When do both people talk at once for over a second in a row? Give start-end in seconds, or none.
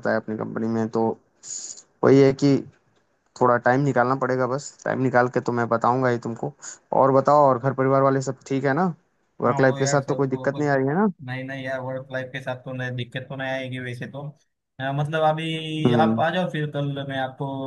9.4-10.7